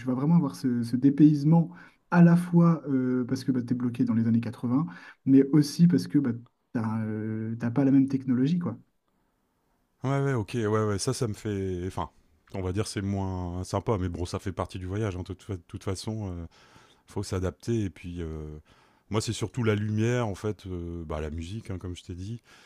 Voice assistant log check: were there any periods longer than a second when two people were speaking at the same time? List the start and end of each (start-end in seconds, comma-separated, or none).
none